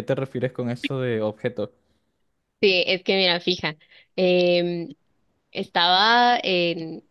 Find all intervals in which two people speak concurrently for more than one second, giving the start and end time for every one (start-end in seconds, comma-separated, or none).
none